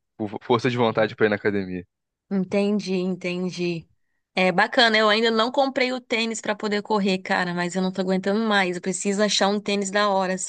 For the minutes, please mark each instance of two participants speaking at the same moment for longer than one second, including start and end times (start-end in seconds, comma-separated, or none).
none